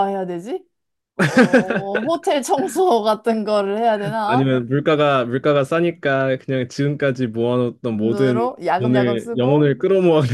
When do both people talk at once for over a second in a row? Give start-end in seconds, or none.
7.9-9.7